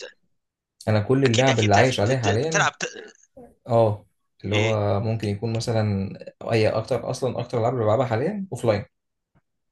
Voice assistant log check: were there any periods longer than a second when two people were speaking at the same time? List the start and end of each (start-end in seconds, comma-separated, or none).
1.2-2.7